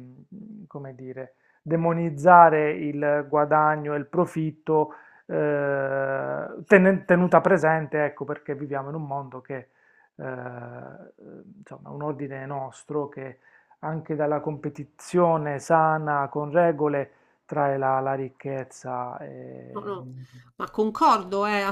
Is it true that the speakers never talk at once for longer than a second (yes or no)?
yes